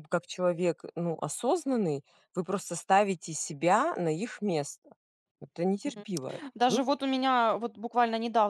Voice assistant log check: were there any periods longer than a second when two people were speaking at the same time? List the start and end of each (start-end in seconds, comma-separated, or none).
none